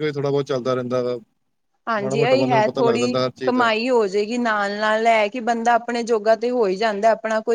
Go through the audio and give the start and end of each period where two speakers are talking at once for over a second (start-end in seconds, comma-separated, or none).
2.0-3.7